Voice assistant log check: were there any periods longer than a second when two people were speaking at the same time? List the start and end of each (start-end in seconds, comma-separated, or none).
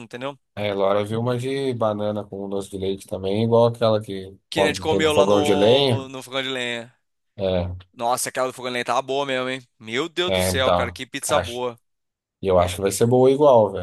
4.5-6.1, 10.3-11.6